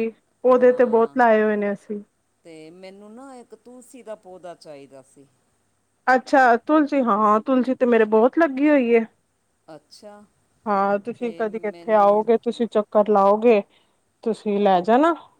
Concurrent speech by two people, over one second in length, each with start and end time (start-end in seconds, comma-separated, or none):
11.0-12.3